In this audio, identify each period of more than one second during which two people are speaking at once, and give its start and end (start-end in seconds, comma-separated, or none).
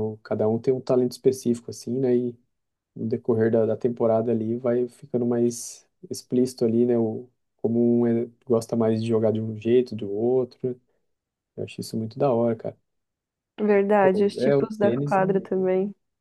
14.0-15.4